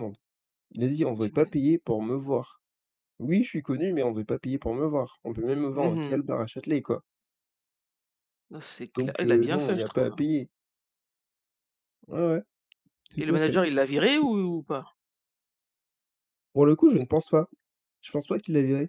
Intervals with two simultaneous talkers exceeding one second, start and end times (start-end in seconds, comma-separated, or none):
9.0-10.2